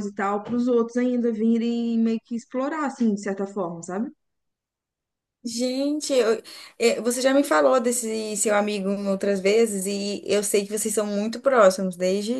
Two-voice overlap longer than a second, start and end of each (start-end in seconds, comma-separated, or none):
none